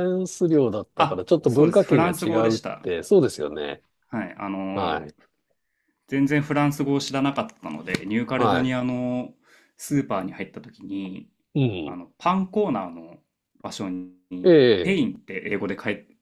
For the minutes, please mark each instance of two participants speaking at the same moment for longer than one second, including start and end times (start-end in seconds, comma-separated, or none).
1.0-2.9